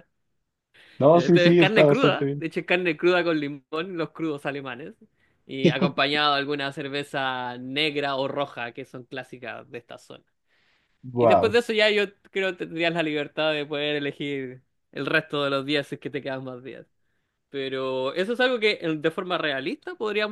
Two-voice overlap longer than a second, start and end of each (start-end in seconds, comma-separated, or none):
1.1-2.5